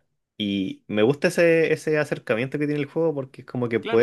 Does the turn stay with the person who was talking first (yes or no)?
no